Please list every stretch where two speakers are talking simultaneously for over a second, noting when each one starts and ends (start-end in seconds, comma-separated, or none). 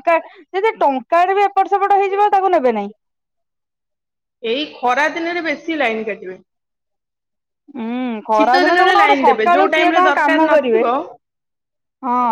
8.3-10.8